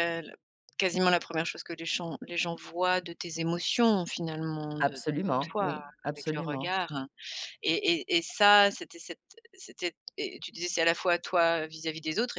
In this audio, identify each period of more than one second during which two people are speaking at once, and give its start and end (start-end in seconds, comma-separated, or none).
4.8-6.7